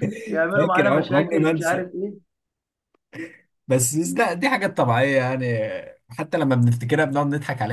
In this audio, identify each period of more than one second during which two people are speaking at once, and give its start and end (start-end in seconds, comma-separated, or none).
0.5-1.8